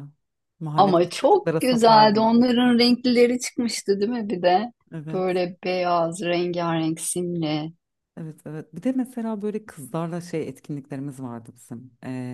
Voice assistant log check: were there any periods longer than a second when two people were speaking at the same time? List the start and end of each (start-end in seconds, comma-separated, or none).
0.8-2.3